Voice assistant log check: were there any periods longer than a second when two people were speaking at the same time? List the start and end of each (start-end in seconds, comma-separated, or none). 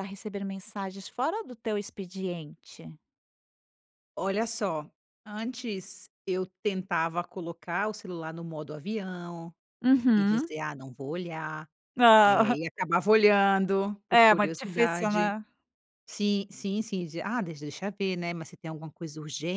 14.1-15.4